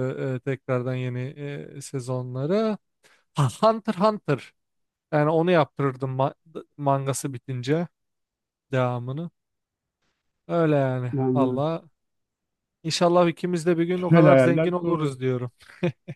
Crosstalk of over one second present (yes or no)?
yes